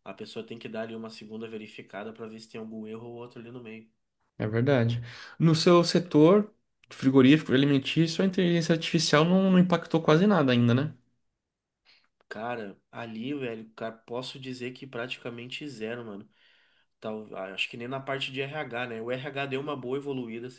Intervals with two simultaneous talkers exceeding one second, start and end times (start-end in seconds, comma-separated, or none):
none